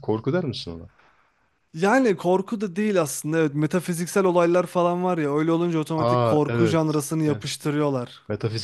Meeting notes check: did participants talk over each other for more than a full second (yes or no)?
yes